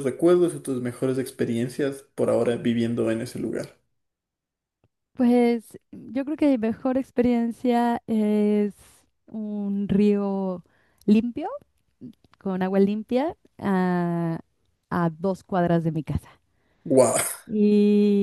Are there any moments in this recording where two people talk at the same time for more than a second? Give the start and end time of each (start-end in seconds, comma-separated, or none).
none